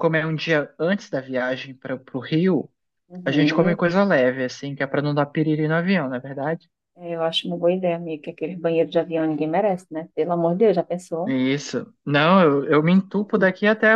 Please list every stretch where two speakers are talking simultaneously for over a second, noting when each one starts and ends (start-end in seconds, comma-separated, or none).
none